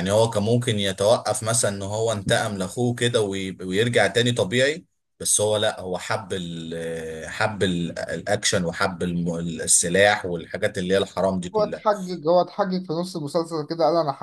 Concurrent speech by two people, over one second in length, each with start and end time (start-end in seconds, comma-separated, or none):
none